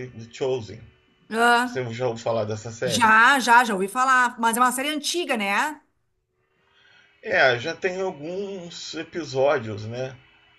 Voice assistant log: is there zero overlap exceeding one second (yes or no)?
yes